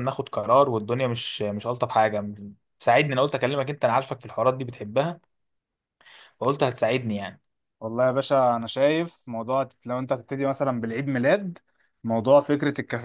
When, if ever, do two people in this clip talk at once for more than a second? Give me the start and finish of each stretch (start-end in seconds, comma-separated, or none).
none